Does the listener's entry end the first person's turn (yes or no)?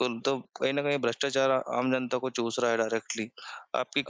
yes